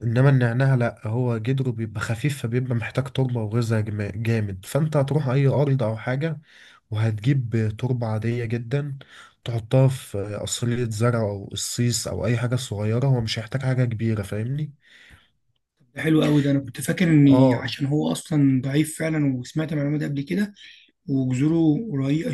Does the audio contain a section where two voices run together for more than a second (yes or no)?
no